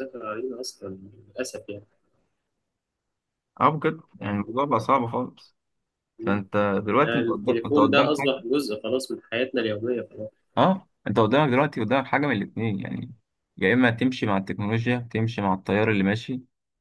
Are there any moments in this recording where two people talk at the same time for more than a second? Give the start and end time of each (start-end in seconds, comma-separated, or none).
7.0-8.3